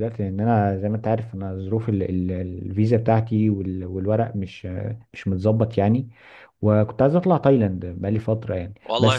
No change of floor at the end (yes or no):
no